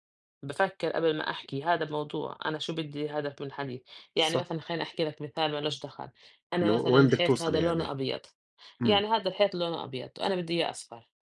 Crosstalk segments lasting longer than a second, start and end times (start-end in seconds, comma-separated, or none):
6.6-7.9